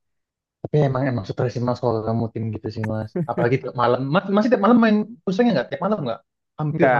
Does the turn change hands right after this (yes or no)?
yes